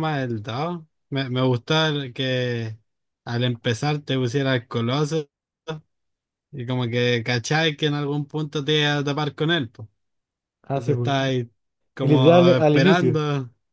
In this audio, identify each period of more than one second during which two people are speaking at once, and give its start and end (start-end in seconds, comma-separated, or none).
12.0-13.2